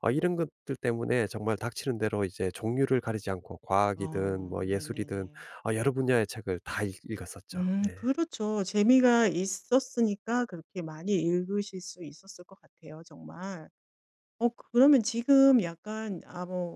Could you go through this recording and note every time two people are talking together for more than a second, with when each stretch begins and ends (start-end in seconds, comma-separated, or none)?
4.0-5.3